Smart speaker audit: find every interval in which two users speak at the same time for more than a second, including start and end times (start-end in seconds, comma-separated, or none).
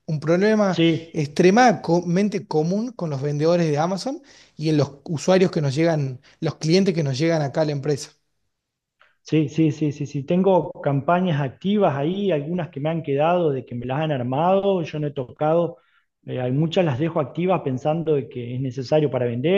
none